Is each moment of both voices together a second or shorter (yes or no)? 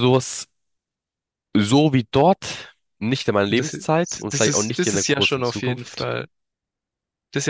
no